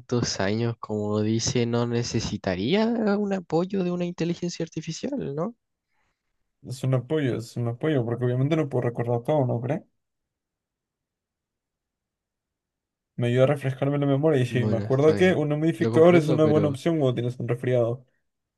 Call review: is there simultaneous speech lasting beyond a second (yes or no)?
yes